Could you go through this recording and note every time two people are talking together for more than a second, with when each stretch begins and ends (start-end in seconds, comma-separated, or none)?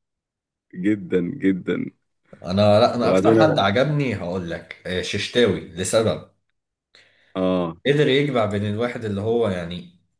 none